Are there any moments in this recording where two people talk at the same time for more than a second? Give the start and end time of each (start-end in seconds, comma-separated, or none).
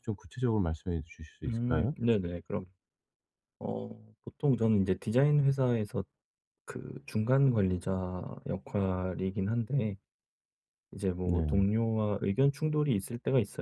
none